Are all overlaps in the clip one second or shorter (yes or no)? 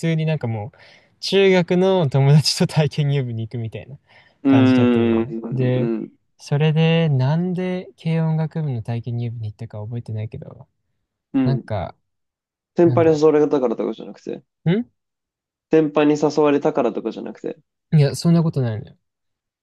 no